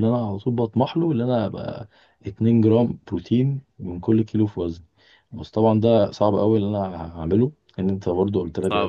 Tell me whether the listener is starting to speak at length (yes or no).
no